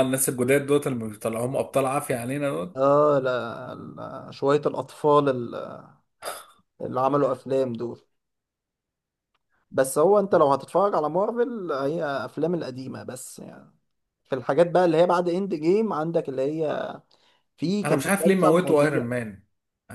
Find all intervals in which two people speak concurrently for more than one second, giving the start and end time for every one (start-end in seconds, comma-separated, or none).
17.8-19.0